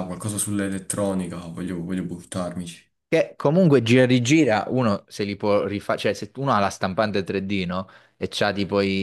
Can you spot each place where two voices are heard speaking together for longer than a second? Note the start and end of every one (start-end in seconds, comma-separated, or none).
none